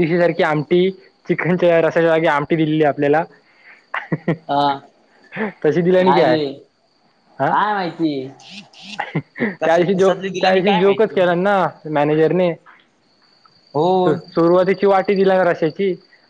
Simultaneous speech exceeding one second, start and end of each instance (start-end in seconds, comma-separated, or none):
9.6-11.2